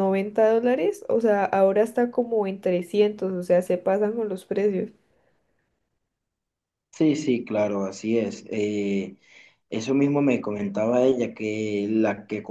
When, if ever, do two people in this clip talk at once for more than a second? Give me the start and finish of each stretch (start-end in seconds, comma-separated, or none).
none